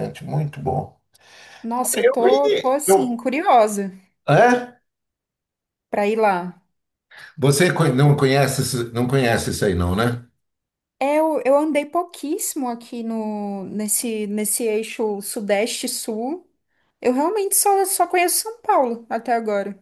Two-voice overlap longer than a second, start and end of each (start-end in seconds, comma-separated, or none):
1.9-3.2